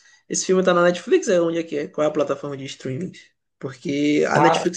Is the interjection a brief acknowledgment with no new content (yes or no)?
yes